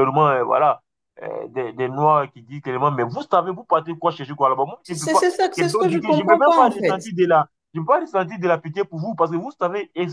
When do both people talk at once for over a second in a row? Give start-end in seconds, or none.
4.8-7.1